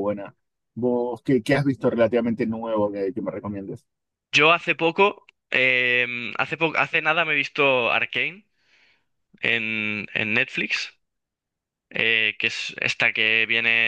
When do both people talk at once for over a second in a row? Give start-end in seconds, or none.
none